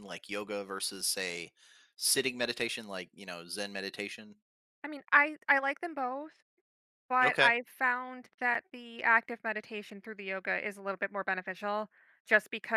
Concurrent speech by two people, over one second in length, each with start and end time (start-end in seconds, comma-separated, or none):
none